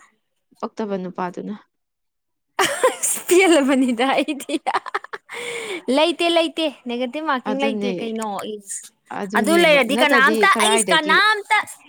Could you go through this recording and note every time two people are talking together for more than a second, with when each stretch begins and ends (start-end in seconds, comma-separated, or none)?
9.4-11.2